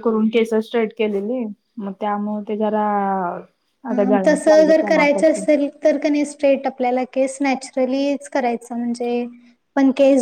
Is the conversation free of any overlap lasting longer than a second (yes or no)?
no